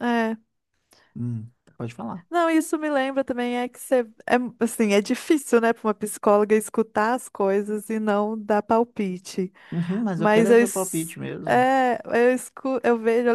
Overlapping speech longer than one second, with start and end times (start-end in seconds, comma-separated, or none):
10.2-11.7